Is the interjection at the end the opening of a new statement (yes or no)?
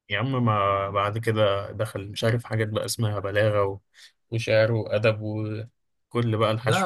yes